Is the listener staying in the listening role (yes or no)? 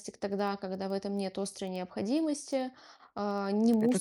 yes